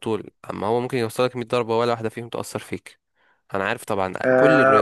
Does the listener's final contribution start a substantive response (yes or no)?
yes